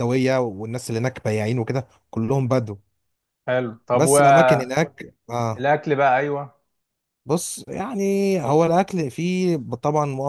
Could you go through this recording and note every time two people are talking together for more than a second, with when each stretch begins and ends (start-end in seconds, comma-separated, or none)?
none